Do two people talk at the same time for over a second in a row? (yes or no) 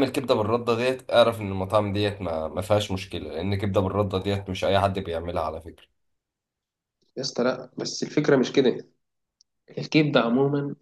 no